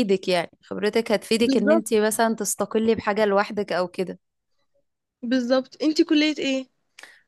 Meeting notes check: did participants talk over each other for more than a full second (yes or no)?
no